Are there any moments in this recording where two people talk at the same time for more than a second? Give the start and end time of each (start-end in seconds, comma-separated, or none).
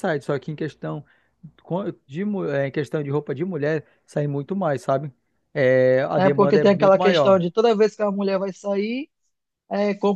6.2-7.4